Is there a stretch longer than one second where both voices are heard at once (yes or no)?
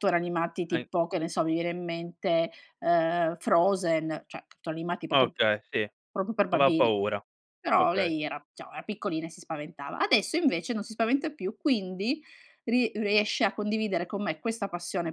no